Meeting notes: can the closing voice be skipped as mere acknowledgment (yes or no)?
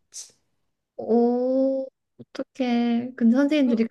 yes